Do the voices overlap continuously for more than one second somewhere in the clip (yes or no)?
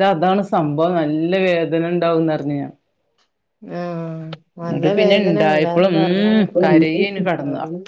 yes